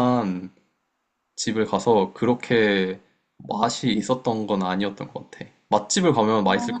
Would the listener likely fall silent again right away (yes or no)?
no